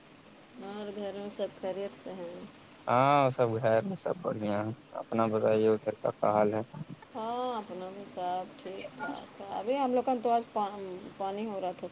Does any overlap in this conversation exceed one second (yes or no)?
no